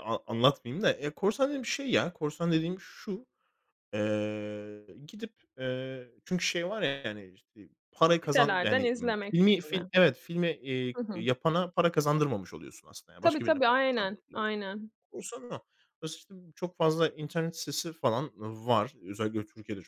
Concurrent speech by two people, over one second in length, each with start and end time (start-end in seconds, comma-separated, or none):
8.2-9.9, 13.2-14.5